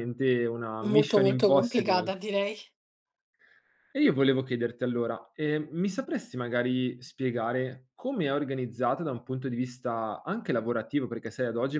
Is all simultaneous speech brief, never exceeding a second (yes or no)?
no